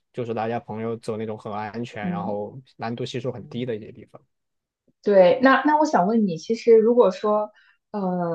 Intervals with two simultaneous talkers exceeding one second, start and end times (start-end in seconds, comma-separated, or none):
none